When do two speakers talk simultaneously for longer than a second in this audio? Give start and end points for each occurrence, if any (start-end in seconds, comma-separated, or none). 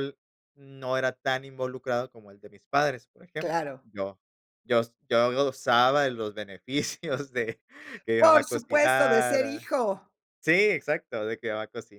8.2-9.7